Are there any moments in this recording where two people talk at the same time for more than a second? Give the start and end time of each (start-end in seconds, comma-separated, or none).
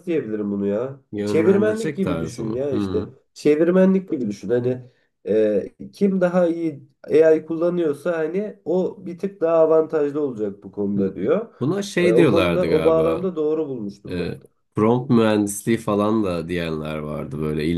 1.1-3.1, 12.0-13.3